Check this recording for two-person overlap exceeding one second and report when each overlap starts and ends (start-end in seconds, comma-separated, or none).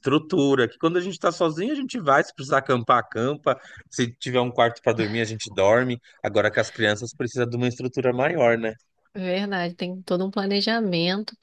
none